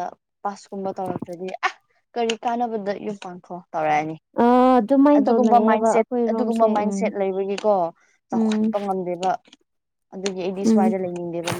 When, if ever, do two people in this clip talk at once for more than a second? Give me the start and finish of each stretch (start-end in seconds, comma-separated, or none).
5.2-6.9